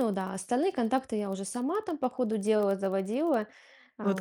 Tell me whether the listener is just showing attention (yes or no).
no